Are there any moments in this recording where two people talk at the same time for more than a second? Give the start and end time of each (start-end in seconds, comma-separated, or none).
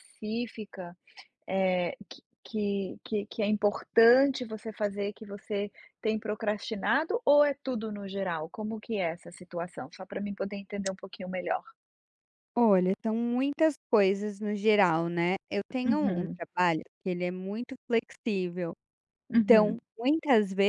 none